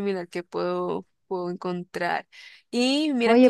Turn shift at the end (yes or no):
yes